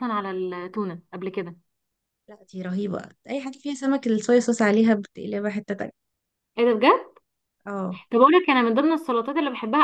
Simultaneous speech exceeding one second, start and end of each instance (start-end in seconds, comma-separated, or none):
none